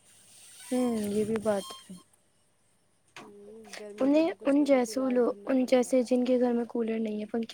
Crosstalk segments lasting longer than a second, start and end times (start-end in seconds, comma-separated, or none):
4.0-5.9